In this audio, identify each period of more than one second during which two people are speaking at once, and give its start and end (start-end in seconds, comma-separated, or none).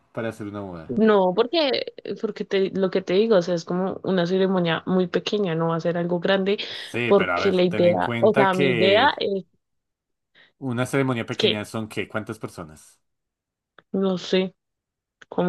7.0-9.1